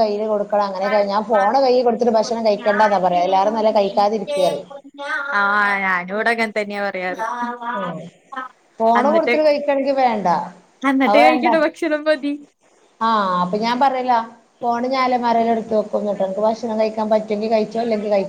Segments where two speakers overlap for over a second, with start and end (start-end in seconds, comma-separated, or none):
2.2-4.4